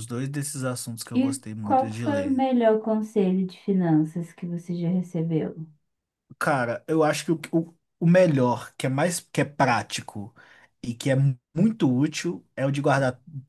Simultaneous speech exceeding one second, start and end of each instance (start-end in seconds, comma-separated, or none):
1.1-2.4